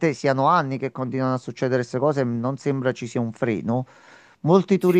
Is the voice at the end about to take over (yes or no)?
no